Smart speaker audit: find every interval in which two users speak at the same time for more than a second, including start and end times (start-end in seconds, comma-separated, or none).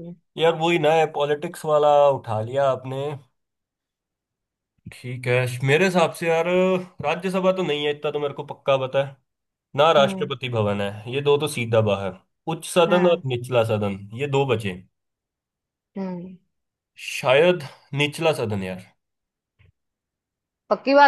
none